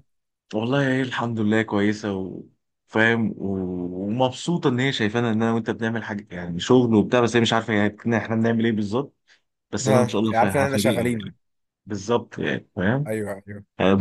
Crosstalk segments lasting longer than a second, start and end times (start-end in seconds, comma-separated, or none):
9.9-11.3